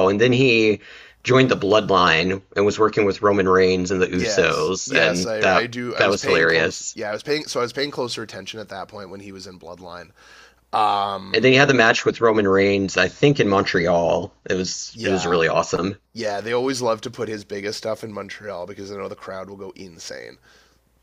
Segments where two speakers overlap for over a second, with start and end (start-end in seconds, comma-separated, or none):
4.1-7.0